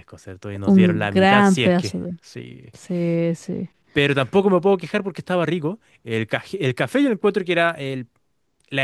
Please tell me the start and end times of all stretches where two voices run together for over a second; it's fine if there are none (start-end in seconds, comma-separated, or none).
0.7-2.1